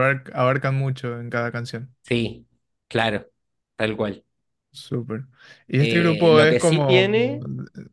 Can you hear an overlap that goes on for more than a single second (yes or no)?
yes